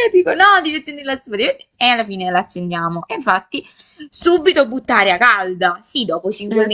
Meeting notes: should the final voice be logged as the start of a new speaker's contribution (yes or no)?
no